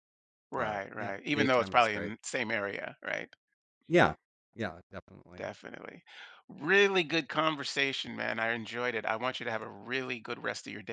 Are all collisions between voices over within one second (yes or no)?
no